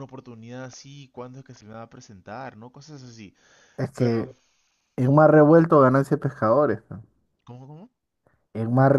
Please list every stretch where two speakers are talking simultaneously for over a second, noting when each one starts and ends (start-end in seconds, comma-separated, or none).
none